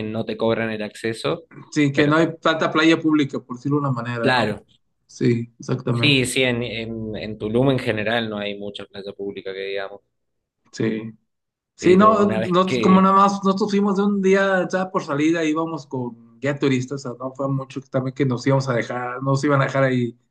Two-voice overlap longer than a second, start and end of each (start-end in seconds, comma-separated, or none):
11.8-13.1